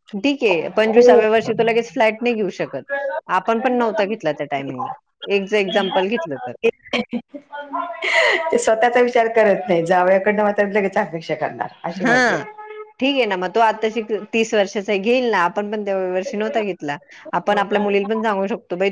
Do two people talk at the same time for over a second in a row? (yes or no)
no